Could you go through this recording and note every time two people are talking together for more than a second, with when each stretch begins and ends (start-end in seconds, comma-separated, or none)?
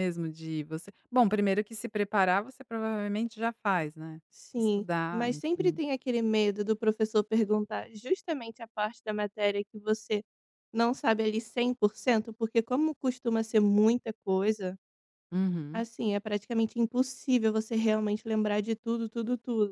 4.5-5.8